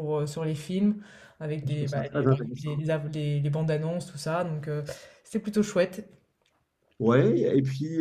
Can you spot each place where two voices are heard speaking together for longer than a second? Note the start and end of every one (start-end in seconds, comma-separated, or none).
1.6-2.8